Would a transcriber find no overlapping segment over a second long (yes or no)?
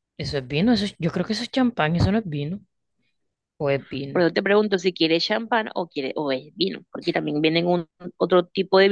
yes